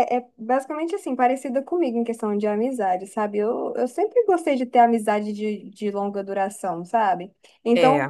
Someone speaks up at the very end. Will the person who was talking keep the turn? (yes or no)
yes